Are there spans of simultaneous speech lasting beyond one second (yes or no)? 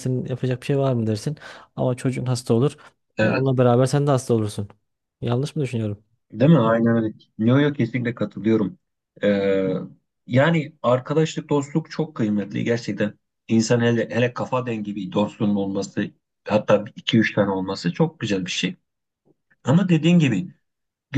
no